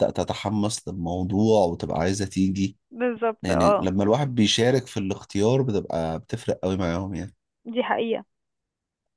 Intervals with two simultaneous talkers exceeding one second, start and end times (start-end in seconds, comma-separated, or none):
none